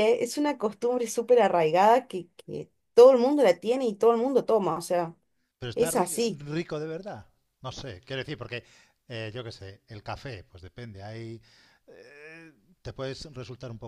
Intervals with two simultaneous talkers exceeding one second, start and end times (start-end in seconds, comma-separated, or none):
none